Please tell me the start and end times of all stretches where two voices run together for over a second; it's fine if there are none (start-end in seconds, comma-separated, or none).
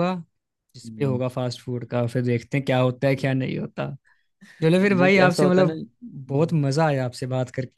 5.0-6.5